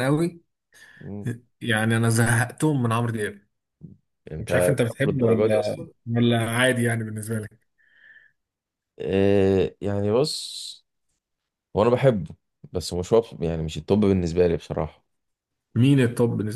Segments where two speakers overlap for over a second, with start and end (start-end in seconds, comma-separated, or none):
4.4-5.9